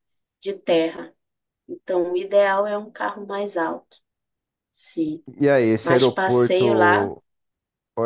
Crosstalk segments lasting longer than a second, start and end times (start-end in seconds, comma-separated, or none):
5.8-7.1